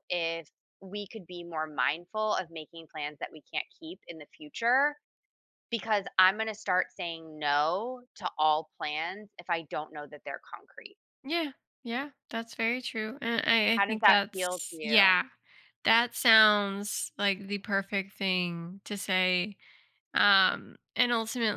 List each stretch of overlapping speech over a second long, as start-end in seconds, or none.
13.7-15.2